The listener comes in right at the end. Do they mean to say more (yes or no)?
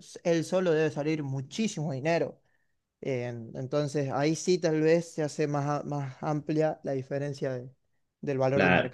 yes